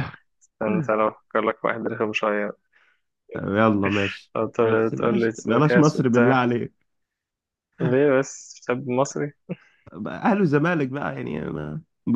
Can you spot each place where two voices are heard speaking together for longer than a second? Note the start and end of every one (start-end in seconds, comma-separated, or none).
4.9-6.4